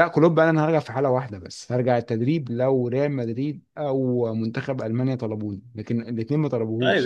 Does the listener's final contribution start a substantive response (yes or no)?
yes